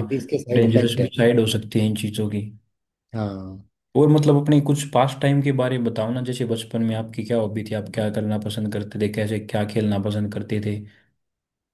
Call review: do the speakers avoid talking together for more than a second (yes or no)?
yes